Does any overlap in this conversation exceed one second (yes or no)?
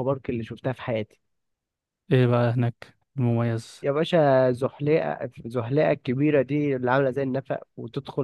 no